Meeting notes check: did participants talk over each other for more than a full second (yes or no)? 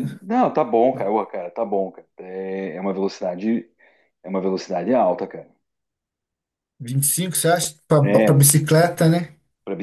no